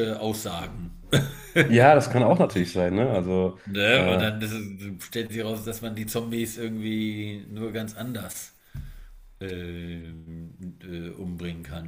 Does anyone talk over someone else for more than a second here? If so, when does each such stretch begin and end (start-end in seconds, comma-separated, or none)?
none